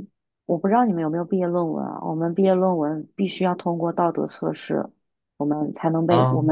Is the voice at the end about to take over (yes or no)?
no